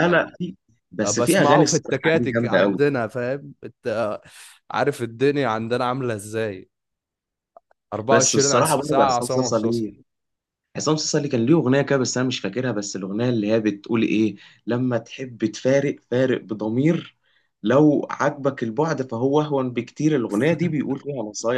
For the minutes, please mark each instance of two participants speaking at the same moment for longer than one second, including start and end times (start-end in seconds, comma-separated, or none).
1.1-2.8, 8.1-9.9